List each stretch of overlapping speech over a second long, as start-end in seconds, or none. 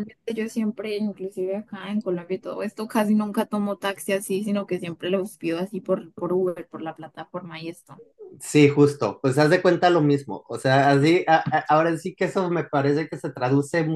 none